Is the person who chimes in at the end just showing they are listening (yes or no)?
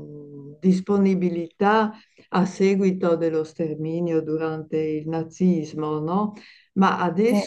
yes